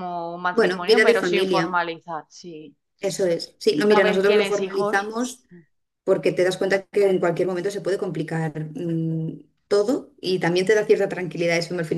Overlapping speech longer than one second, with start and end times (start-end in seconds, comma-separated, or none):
0.5-1.8, 3.8-5.1